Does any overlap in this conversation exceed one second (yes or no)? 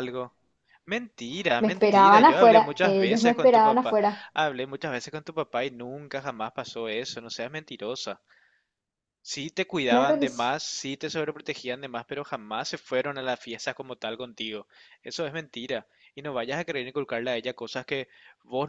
yes